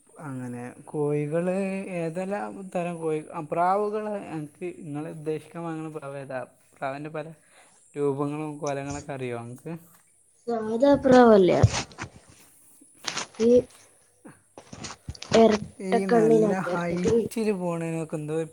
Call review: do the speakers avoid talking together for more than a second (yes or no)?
no